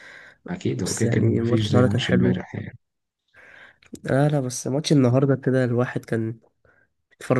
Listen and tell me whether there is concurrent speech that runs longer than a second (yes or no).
yes